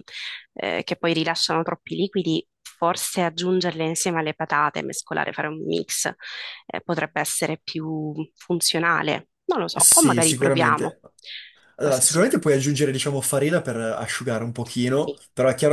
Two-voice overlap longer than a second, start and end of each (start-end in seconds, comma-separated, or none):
9.7-11.0